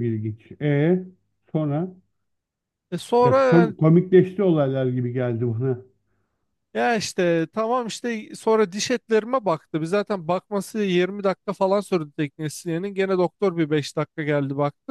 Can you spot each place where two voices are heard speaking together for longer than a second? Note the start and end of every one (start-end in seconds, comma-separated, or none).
none